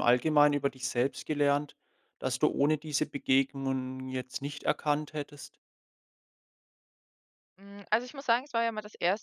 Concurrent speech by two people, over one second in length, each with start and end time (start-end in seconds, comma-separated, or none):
none